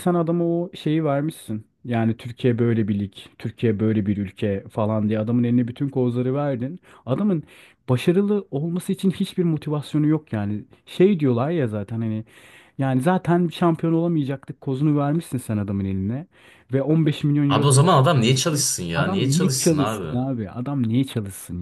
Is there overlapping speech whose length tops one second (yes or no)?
yes